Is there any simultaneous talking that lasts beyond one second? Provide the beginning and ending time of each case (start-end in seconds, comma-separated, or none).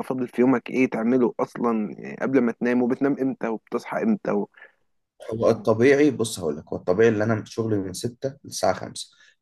none